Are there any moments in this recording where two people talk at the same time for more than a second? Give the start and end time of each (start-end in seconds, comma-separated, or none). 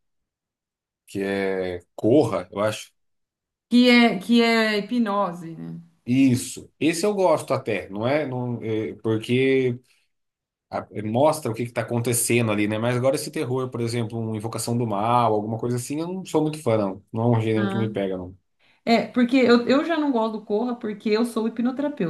none